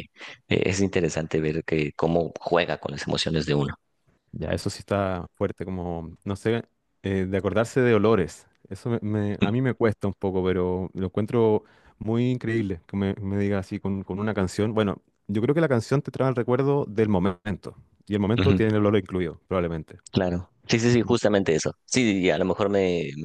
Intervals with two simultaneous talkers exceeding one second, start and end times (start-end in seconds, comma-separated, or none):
none